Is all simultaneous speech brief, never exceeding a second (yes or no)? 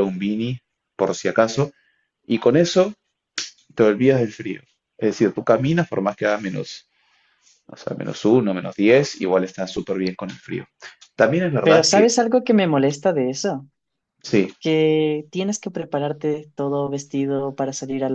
yes